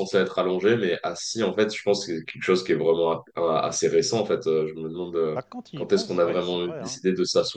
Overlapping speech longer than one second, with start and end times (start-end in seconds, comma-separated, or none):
5.3-7.0